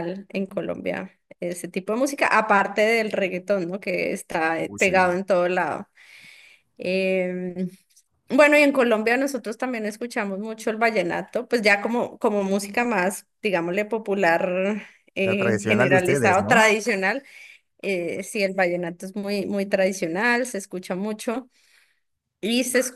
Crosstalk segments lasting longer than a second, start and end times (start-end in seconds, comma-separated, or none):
15.2-16.7